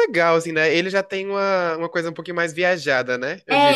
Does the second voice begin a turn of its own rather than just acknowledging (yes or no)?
yes